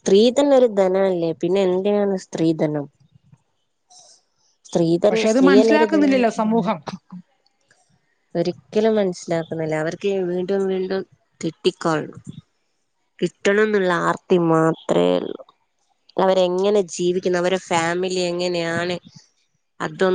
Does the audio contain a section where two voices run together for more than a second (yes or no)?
yes